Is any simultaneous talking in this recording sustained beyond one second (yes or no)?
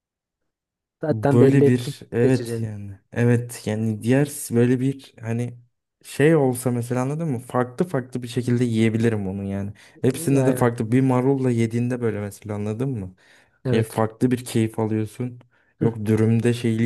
yes